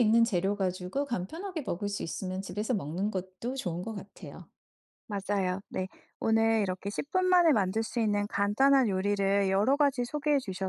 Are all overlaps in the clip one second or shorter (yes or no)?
yes